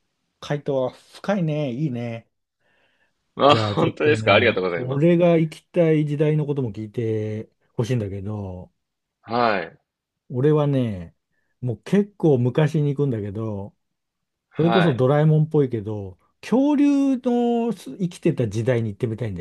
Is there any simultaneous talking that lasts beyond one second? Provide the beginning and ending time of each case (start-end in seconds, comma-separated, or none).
3.5-5.1